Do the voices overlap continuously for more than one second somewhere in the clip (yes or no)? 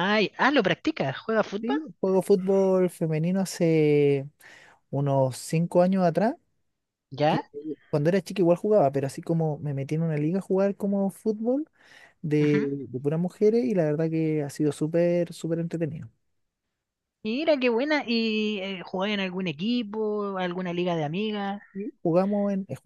no